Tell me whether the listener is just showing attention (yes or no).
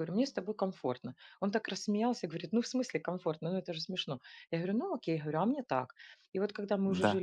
yes